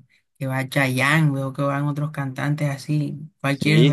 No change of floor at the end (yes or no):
no